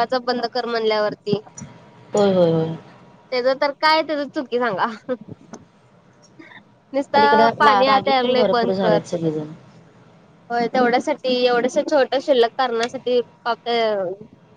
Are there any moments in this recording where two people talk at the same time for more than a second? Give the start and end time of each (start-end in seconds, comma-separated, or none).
7.6-9.0